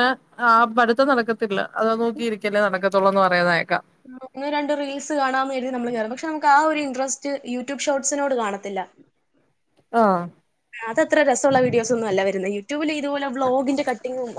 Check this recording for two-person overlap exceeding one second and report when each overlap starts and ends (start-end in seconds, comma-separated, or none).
none